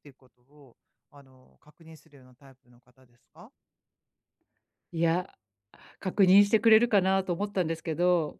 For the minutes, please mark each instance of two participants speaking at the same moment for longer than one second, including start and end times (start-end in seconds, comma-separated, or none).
none